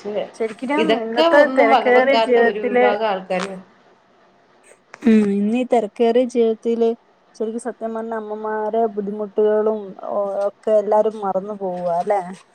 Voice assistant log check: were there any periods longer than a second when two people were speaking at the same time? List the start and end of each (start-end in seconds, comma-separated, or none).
0.8-2.9